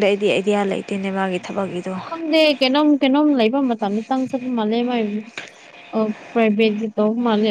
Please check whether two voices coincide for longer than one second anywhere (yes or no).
no